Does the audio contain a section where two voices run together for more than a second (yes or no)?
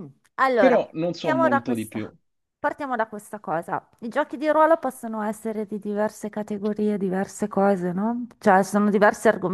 yes